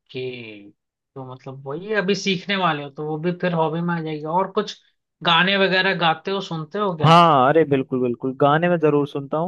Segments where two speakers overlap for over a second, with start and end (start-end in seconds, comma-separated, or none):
none